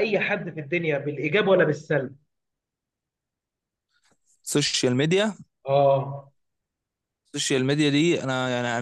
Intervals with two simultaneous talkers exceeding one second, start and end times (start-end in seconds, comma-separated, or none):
none